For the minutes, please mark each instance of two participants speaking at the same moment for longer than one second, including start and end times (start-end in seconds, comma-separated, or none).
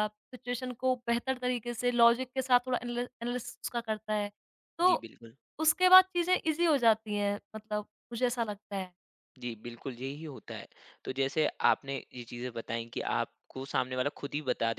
none